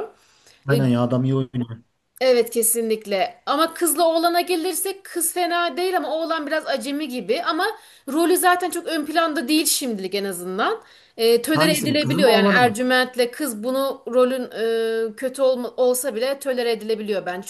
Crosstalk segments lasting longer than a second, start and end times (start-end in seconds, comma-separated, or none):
11.5-12.8